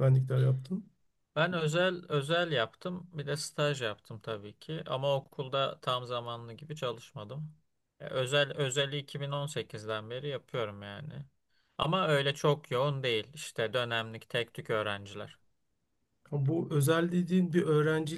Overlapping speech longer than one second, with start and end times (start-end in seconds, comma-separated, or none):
none